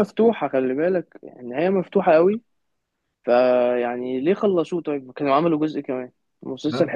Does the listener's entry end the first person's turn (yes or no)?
no